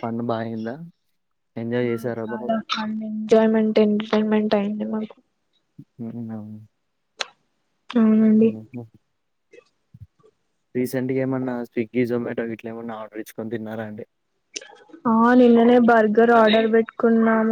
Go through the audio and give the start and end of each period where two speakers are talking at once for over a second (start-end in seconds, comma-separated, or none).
none